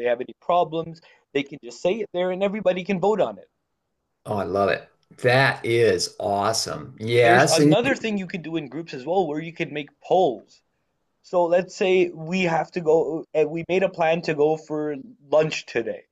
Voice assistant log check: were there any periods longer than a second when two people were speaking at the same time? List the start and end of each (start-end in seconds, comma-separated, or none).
none